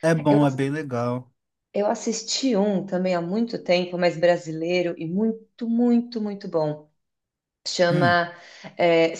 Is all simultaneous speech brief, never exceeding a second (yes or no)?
yes